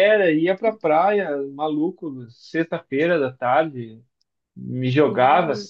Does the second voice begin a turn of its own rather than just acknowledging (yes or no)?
no